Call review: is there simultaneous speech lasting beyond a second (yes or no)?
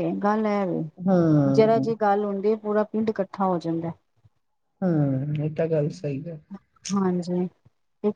no